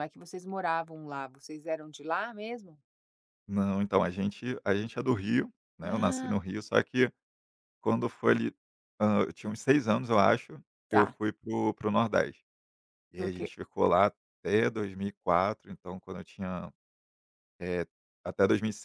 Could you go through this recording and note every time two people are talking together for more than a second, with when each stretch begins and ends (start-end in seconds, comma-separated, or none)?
none